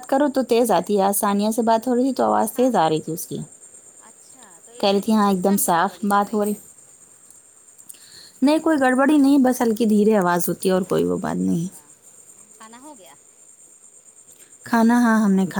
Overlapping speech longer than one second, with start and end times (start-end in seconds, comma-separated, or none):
4.8-6.5